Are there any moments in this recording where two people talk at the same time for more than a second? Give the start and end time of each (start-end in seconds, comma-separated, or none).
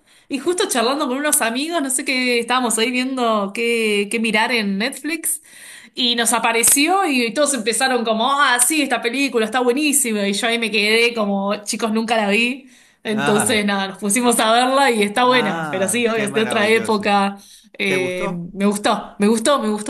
15.2-17.1